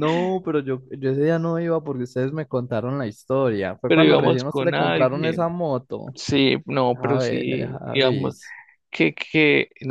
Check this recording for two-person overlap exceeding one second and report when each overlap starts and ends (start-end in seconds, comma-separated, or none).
3.9-5.5, 6.9-8.4